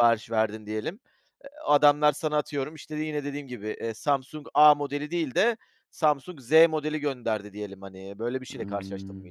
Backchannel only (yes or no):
no